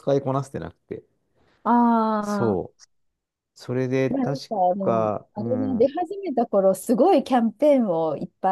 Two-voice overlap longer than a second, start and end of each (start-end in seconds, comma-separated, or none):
4.1-5.9